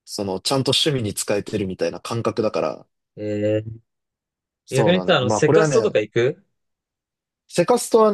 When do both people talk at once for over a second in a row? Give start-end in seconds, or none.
4.7-5.9